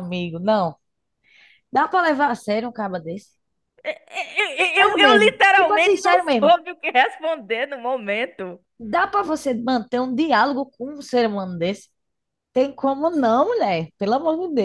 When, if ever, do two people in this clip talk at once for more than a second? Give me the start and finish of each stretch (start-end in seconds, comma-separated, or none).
4.8-6.5